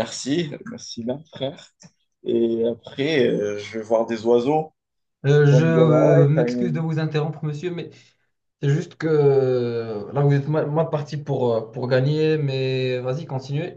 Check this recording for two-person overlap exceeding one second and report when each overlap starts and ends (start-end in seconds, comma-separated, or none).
5.5-6.8